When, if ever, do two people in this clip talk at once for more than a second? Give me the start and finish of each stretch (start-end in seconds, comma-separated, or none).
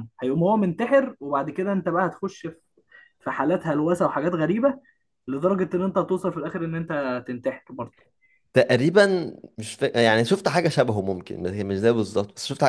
none